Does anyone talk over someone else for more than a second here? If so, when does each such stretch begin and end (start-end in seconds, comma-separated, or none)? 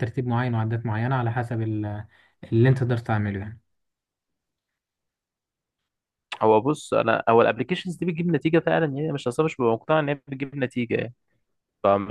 none